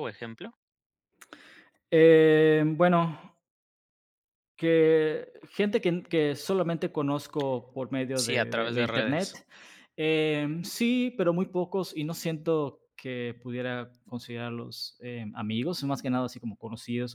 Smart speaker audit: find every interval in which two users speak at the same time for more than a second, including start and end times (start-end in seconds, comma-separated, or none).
8.1-9.4